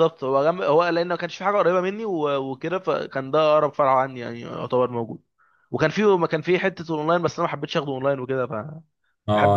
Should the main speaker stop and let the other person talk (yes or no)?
yes